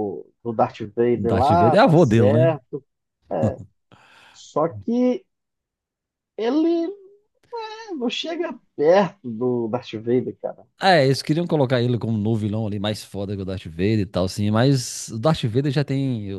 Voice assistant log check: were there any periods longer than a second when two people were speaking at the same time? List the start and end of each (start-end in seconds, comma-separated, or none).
1.2-2.6